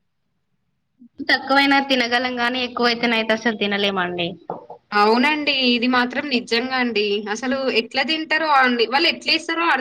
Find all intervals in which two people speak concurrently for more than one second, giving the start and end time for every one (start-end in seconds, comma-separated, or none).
none